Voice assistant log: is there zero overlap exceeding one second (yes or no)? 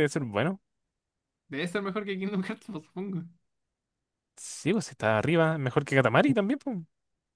yes